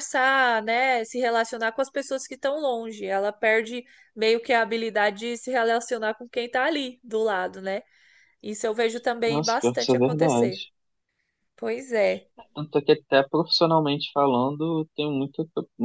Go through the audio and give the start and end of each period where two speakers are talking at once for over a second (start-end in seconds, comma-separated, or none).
9.3-10.6